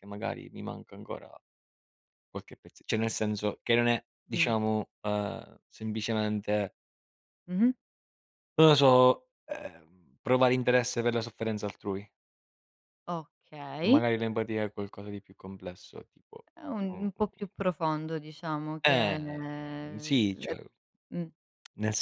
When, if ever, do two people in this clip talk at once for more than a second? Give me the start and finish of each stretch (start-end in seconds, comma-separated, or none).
18.9-20.5